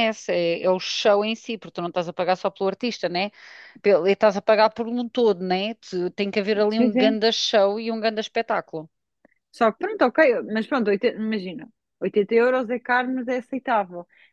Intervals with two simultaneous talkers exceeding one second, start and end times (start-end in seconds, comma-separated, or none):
none